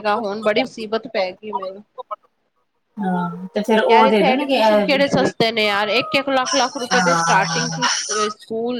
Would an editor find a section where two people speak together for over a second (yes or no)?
yes